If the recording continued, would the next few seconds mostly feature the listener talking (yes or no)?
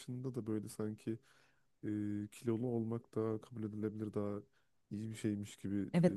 yes